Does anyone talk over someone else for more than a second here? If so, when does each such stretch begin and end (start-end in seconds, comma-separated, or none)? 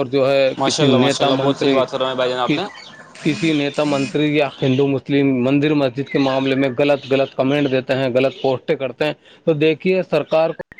0.6-1.8